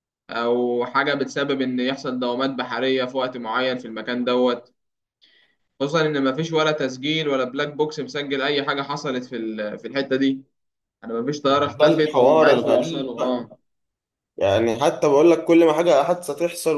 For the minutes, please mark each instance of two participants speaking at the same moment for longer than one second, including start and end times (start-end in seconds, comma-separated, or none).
11.8-13.5